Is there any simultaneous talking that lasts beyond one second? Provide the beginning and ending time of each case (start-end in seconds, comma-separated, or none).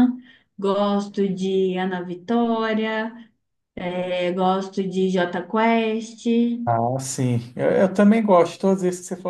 none